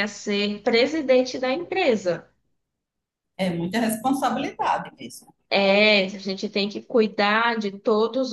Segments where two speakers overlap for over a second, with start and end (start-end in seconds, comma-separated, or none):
none